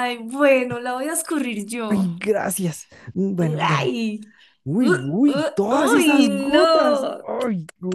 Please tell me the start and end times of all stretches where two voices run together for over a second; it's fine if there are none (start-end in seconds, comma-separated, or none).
4.8-7.3